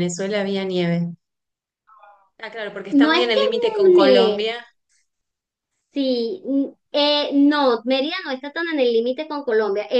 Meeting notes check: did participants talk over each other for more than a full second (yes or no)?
yes